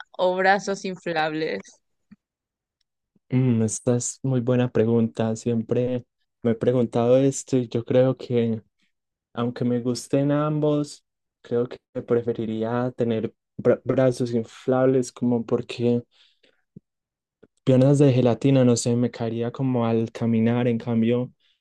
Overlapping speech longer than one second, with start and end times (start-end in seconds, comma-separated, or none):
none